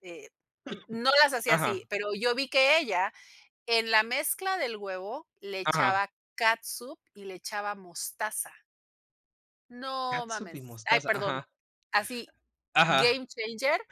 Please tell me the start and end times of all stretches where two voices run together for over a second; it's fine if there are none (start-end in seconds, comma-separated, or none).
10.1-11.4